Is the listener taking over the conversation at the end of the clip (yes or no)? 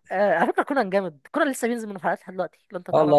yes